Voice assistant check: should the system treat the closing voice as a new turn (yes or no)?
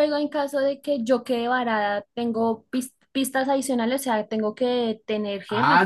yes